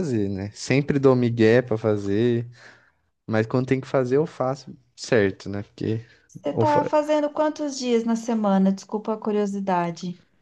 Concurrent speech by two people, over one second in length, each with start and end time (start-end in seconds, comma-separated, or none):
none